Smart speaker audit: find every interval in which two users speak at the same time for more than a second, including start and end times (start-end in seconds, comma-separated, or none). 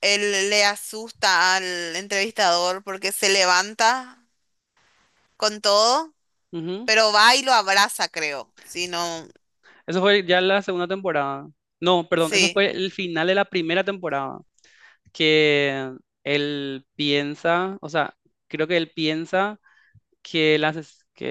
none